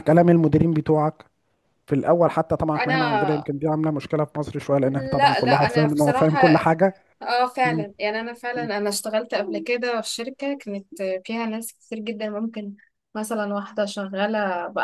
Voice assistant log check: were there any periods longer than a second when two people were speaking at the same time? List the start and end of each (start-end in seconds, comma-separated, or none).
4.8-6.4